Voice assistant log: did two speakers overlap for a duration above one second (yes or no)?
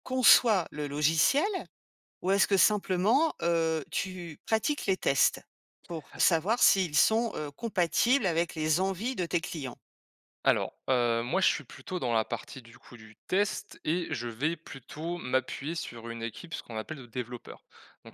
no